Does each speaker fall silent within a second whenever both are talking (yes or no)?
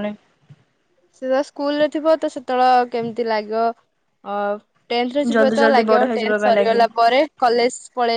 no